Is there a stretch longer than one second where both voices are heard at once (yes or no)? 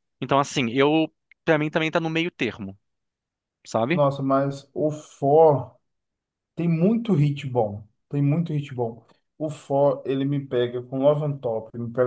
no